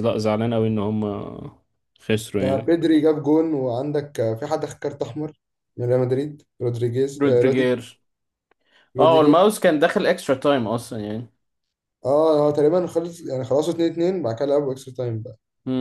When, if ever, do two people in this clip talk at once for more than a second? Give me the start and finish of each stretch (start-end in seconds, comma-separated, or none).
none